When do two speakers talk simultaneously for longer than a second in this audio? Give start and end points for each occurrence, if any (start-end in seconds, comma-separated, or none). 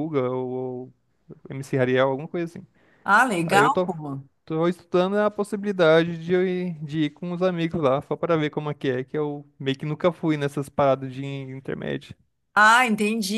none